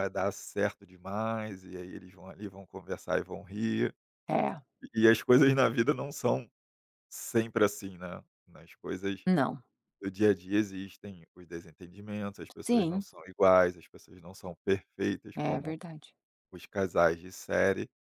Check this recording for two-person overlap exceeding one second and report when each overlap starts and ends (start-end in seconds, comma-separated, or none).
none